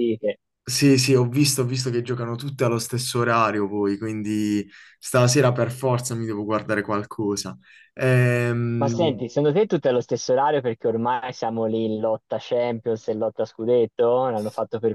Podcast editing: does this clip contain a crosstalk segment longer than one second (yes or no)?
no